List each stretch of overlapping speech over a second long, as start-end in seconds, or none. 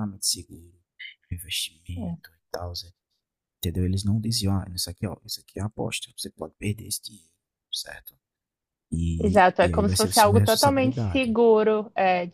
9.2-11.3